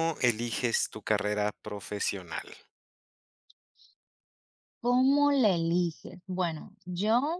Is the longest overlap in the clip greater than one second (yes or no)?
no